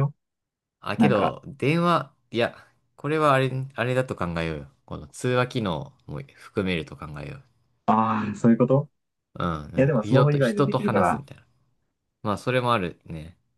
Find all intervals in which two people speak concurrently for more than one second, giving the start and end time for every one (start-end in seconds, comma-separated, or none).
9.8-11.2